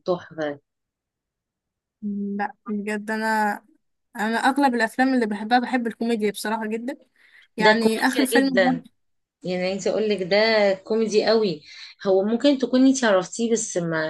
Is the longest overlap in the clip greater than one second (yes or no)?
yes